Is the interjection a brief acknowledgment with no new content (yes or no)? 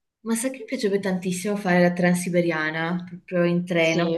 yes